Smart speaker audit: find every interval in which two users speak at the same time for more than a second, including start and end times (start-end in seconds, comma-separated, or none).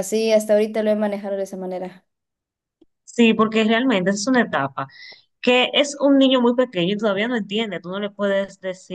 none